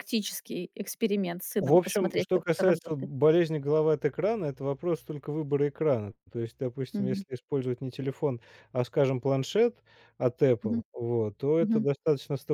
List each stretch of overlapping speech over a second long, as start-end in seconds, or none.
1.6-3.1